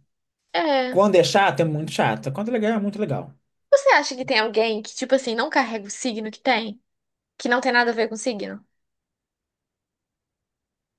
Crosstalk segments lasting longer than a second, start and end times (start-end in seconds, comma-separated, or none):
none